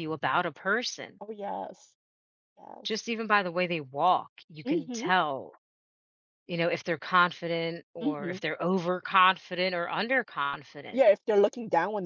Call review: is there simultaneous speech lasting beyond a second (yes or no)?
no